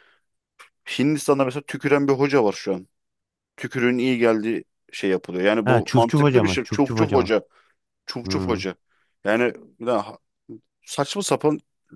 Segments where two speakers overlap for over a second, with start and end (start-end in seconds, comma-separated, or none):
5.7-7.3